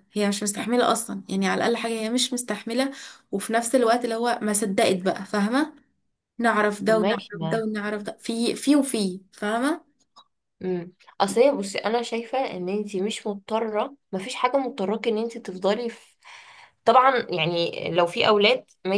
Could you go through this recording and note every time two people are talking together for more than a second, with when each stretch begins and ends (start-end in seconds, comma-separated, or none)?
none